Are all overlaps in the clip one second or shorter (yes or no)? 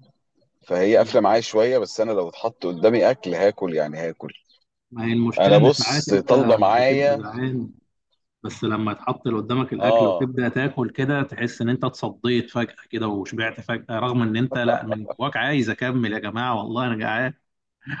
no